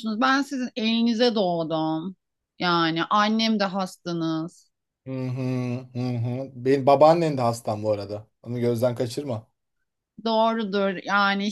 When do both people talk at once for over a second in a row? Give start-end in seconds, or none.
none